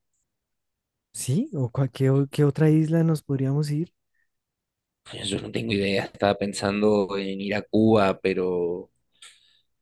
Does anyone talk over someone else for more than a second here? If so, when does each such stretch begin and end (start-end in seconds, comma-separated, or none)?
none